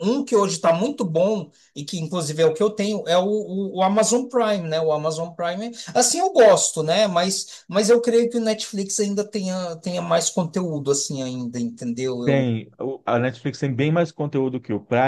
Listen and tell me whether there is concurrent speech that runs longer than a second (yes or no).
no